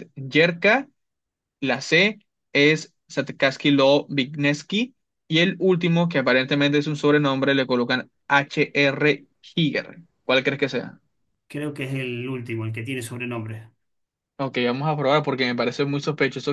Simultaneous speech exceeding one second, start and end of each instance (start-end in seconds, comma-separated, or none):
none